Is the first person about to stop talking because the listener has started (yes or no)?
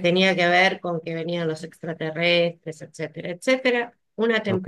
no